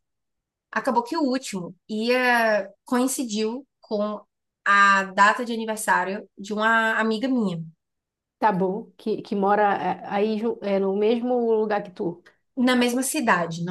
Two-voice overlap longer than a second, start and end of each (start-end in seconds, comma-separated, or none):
none